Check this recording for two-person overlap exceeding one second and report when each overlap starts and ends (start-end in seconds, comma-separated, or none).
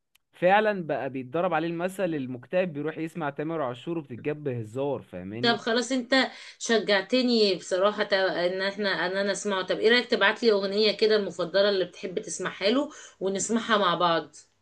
none